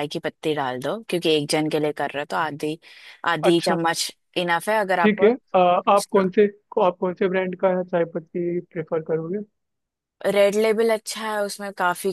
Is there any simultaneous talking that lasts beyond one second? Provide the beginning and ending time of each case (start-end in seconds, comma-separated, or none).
none